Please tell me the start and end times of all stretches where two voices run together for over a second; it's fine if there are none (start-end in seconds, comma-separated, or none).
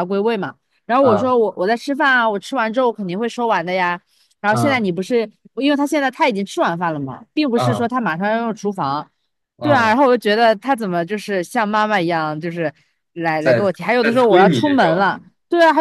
13.4-15.1